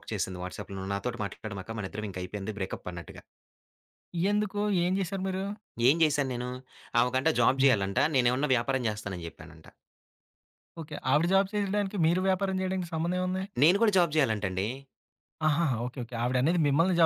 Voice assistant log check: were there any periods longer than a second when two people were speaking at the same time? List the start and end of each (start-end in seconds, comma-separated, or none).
none